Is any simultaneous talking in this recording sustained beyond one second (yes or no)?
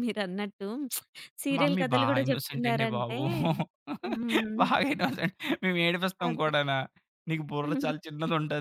yes